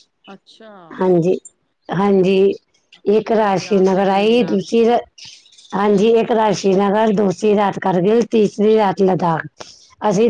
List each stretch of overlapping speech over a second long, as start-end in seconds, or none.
3.2-4.8